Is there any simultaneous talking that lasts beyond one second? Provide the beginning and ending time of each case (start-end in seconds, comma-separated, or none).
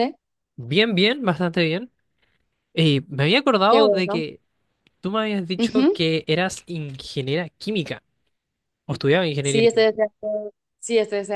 none